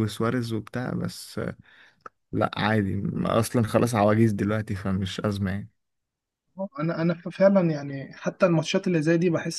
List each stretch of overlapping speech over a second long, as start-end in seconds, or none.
none